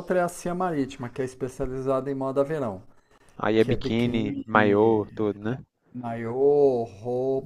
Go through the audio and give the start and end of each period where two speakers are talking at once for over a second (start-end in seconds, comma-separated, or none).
3.6-5.1